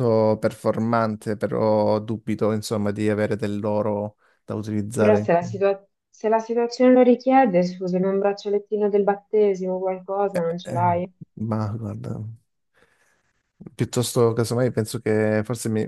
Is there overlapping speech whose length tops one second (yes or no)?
no